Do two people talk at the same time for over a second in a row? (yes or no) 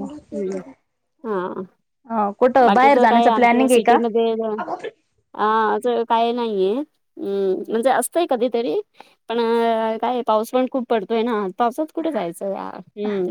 yes